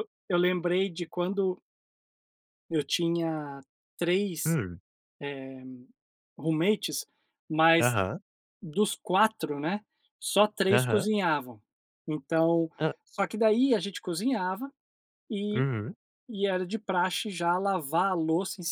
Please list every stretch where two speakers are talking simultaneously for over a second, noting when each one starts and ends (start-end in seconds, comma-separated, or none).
none